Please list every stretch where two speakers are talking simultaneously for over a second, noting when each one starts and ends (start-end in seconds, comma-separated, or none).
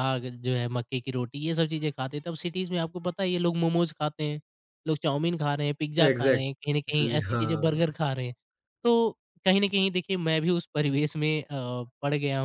6.0-8.0